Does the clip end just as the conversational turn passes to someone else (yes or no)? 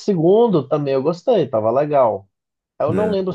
no